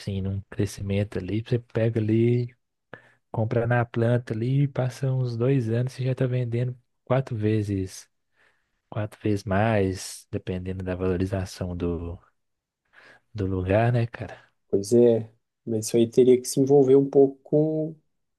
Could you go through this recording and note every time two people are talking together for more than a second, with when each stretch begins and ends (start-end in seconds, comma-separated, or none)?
none